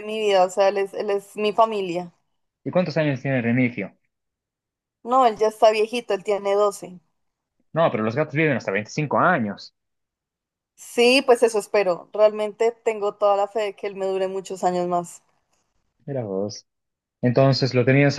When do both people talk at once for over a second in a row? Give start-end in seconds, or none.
none